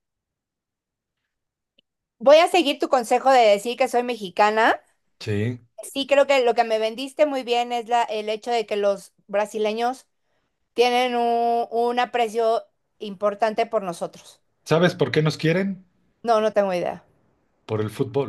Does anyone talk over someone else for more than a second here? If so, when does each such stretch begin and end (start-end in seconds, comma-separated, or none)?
none